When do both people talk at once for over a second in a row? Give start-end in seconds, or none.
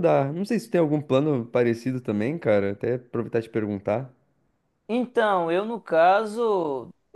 none